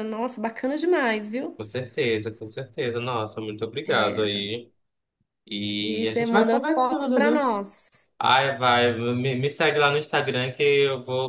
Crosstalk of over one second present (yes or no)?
yes